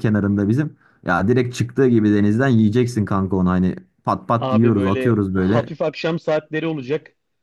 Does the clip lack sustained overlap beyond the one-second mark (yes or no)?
no